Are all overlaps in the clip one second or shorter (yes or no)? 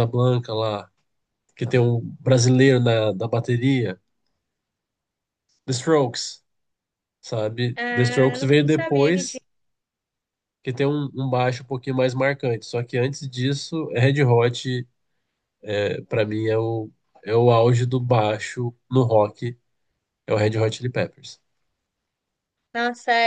no